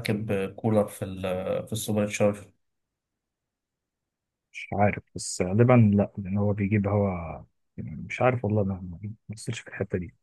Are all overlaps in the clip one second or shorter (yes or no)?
yes